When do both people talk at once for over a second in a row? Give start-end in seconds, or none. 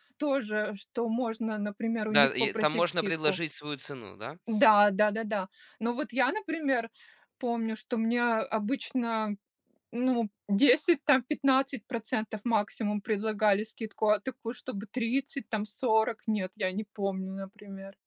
2.1-3.4